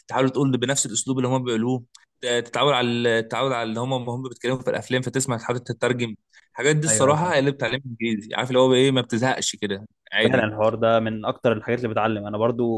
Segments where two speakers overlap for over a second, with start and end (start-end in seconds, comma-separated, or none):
none